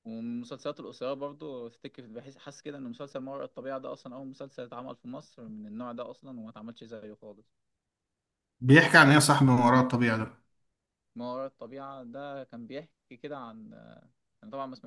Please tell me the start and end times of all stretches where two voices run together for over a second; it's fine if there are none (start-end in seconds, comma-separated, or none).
none